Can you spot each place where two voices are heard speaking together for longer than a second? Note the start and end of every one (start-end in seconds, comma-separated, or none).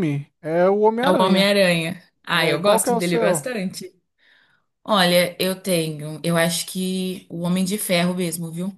2.3-3.5